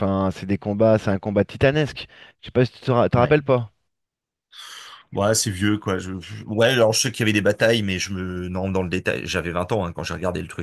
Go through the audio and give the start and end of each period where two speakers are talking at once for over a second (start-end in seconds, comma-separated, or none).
none